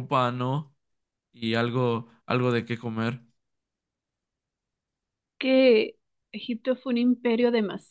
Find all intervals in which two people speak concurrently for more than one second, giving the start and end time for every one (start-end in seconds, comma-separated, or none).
none